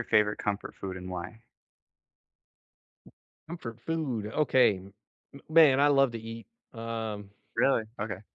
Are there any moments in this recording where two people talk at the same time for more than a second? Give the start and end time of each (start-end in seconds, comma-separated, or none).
none